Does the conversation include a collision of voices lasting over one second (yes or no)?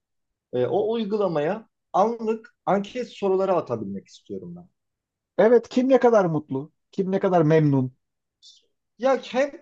no